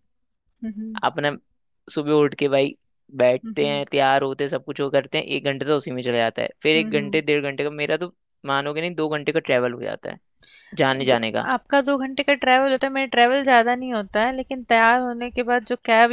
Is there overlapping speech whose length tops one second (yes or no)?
no